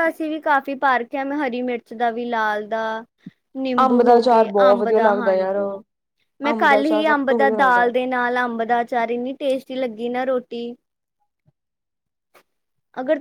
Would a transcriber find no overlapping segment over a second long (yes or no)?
no